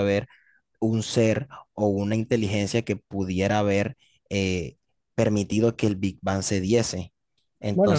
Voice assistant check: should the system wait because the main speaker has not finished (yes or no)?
no